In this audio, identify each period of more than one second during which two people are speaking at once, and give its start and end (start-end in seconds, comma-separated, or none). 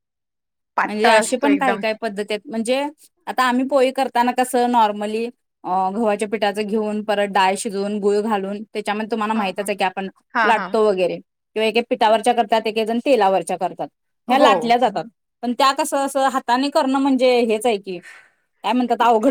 none